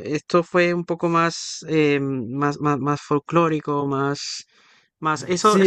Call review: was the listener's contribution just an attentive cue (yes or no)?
no